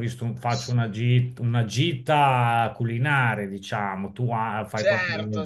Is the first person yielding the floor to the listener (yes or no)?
yes